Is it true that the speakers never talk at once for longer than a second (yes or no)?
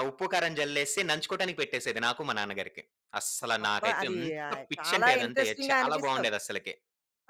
no